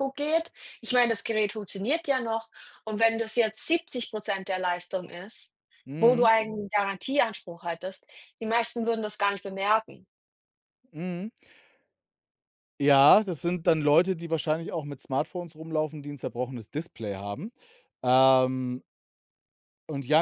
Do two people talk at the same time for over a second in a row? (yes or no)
no